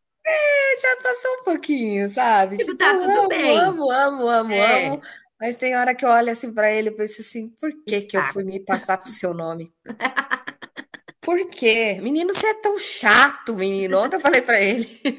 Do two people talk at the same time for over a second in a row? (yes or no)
yes